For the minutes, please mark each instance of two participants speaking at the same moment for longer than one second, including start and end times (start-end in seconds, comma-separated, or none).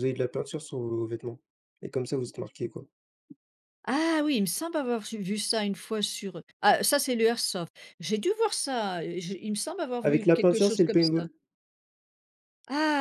10.0-11.2